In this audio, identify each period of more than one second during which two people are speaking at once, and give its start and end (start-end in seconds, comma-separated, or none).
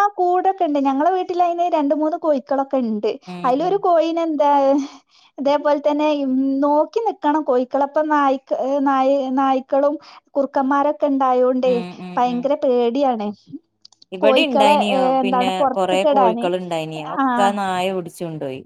14.2-16.4